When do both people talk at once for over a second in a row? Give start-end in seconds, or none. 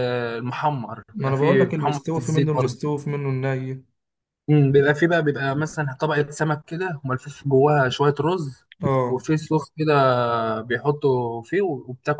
1.1-2.8